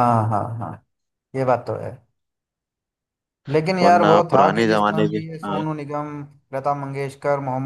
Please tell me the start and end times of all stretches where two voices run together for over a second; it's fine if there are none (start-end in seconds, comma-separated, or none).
3.8-5.6